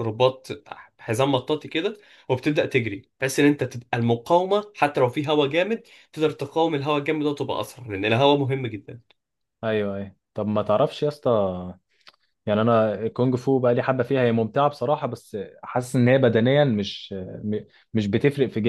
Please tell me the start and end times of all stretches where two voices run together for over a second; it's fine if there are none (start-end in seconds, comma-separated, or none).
none